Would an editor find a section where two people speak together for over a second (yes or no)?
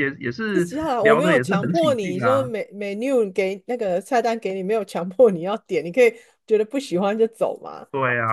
yes